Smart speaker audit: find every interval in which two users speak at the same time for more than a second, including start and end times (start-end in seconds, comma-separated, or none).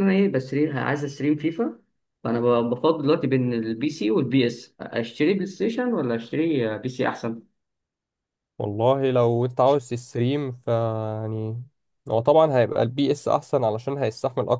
none